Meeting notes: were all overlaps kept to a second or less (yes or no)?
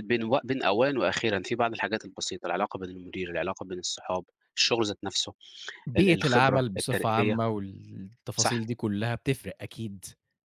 no